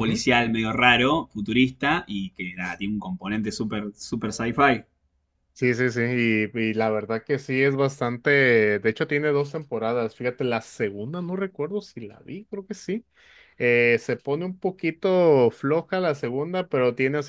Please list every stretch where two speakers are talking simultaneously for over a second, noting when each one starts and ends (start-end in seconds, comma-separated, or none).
none